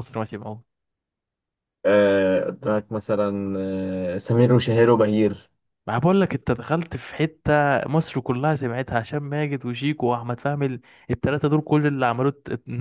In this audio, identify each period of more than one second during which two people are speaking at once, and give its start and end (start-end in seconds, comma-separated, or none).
none